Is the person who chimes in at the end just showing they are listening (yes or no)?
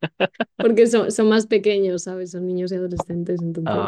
no